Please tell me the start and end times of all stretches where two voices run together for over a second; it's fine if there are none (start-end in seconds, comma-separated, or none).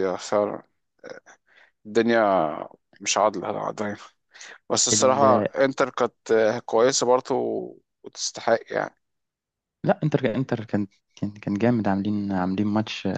none